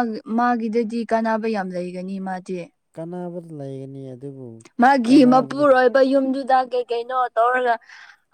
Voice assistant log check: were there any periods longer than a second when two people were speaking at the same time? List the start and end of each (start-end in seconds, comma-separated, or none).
none